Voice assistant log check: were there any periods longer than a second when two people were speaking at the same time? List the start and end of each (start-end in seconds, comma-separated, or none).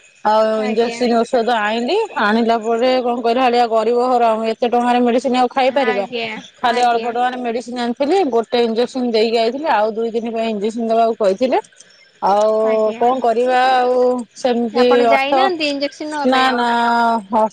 14.8-16.6